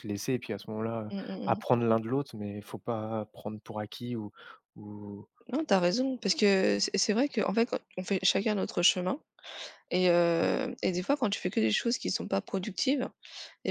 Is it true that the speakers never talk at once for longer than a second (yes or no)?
yes